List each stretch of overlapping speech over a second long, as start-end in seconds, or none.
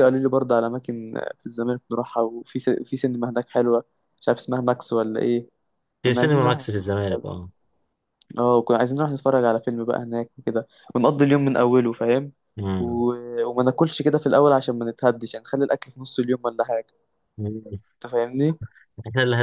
6.0-7.3